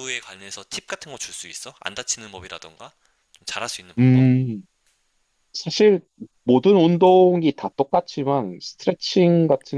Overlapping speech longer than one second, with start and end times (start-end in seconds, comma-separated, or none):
none